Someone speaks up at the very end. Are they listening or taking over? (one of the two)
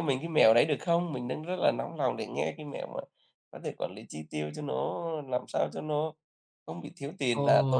taking over